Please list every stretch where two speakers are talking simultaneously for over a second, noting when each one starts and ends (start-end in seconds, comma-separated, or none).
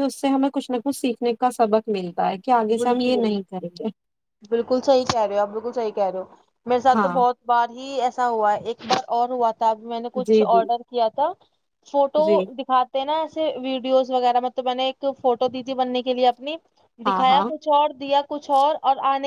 none